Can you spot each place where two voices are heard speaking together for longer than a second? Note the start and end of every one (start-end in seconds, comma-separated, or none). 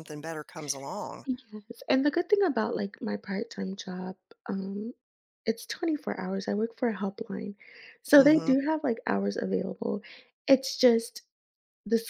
none